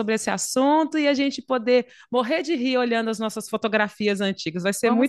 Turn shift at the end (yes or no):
yes